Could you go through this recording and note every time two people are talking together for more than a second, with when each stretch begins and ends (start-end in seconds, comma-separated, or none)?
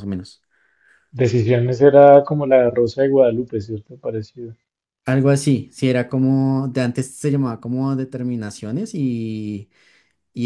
none